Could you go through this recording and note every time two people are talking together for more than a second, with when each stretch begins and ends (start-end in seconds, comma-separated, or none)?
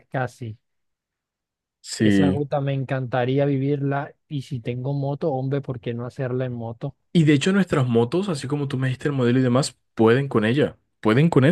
none